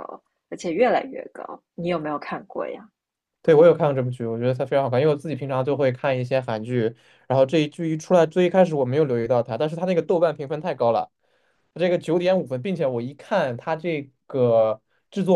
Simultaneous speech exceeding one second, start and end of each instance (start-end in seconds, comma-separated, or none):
none